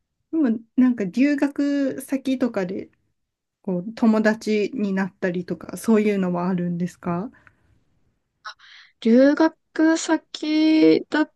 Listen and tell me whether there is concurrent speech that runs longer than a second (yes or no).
no